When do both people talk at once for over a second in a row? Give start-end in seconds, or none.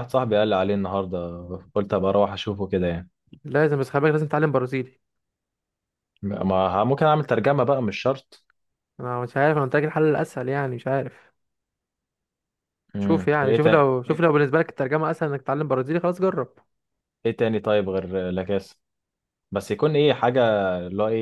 13.0-14.4